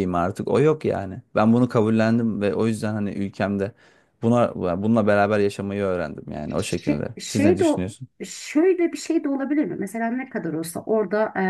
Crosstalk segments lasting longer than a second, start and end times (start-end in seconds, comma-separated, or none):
6.6-8.1